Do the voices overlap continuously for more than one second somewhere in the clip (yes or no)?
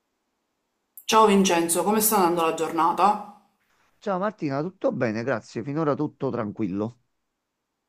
no